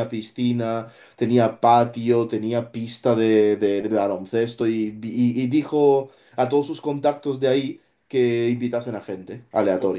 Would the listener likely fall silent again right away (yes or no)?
no